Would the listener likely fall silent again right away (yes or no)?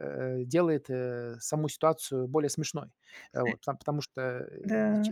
no